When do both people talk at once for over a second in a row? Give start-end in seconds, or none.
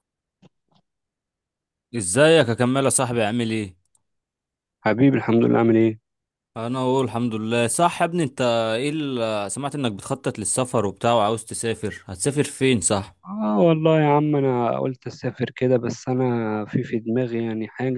none